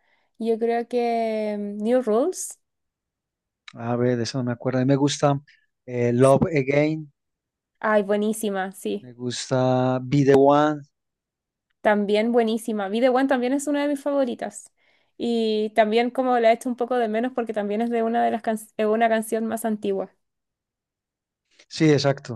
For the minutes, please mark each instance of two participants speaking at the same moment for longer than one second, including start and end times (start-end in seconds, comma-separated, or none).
none